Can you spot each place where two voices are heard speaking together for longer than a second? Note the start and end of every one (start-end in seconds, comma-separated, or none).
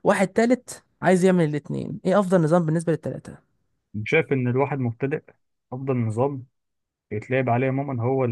none